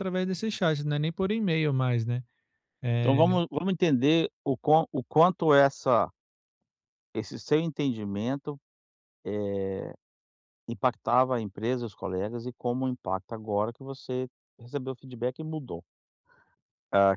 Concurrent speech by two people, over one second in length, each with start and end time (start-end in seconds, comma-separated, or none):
none